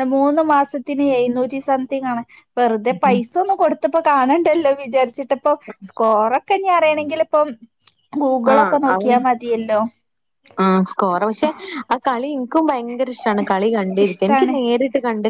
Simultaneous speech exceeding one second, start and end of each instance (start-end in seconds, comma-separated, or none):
none